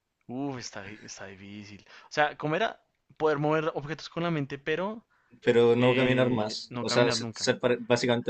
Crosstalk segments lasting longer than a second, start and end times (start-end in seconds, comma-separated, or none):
5.8-7.5